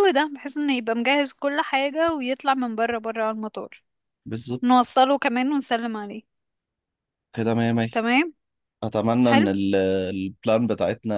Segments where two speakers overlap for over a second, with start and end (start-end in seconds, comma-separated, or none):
none